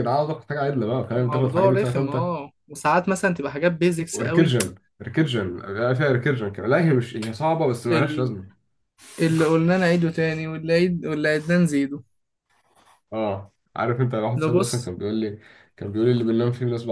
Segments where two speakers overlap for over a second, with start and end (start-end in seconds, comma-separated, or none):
1.1-2.3